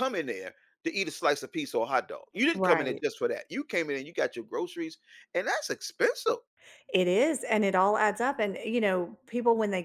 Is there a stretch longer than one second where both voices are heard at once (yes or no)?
no